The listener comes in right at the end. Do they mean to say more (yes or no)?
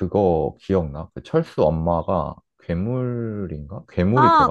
yes